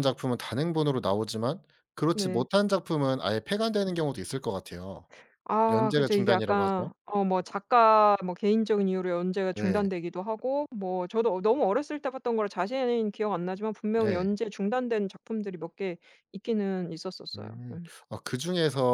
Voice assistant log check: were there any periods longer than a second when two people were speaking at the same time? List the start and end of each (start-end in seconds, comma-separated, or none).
5.7-6.9